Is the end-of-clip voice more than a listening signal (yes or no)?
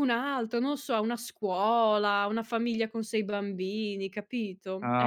yes